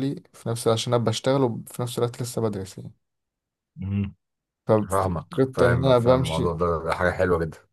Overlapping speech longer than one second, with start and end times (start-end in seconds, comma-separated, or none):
4.9-6.6